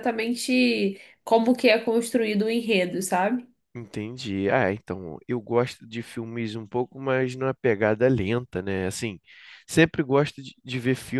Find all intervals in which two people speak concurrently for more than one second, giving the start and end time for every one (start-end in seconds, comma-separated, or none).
none